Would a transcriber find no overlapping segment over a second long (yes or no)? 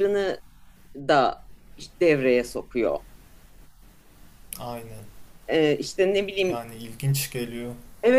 yes